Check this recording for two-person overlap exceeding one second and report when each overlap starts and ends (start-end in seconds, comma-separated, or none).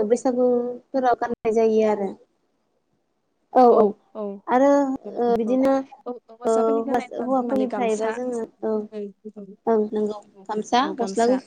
6.5-8.1